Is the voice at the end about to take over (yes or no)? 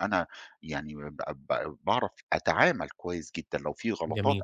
no